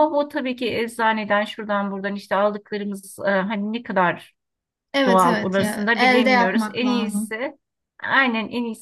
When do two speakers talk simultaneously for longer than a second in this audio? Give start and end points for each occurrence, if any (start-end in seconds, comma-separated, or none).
5.0-7.4